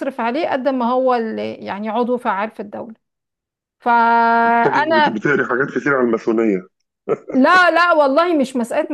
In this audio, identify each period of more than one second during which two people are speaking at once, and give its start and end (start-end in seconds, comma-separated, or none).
none